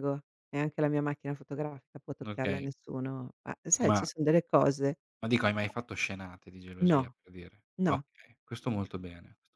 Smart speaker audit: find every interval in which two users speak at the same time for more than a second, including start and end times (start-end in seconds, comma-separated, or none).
none